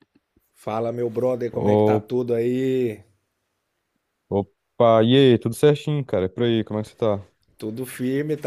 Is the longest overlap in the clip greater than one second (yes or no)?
no